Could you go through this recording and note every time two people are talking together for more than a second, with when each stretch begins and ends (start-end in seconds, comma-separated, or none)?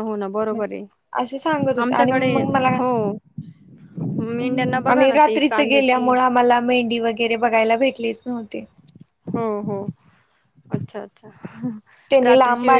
4.4-6.1